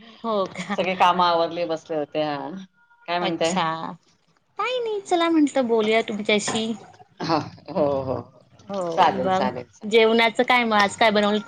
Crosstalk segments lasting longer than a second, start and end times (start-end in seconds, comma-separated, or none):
none